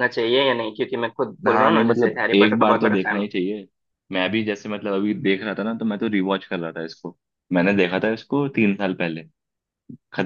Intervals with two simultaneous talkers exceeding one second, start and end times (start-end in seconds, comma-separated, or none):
1.5-3.3